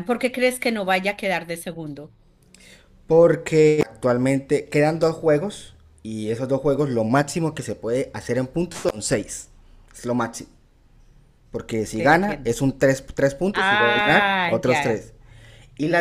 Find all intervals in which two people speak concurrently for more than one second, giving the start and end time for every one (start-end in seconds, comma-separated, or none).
13.5-15.1